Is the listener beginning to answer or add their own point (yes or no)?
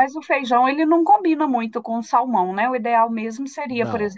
no